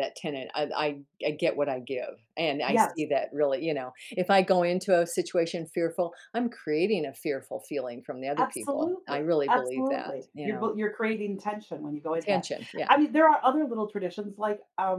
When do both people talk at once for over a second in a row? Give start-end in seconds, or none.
8.4-10.7